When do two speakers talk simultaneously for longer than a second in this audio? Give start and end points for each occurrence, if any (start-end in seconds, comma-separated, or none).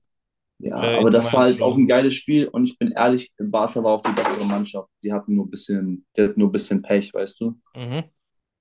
0.8-2.0